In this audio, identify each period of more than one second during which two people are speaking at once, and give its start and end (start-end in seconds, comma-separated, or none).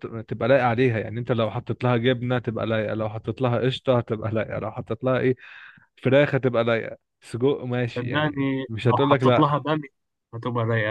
7.9-9.6